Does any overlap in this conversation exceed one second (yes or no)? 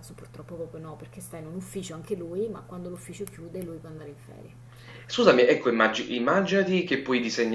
no